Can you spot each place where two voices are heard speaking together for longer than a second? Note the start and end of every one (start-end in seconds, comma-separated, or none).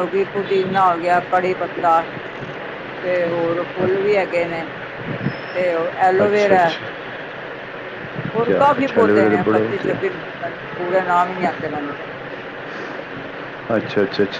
8.4-10.0